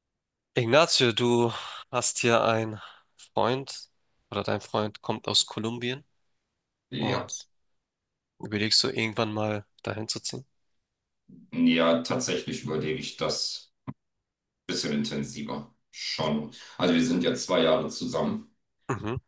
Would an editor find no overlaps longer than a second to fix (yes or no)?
yes